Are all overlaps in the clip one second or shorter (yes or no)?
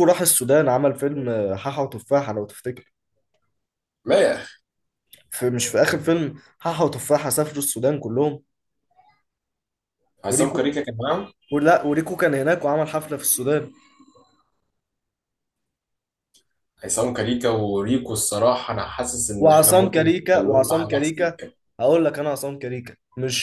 no